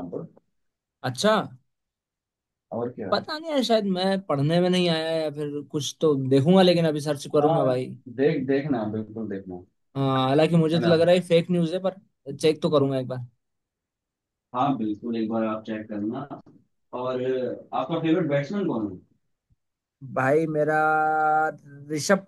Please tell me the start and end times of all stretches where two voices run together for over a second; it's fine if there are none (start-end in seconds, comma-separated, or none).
none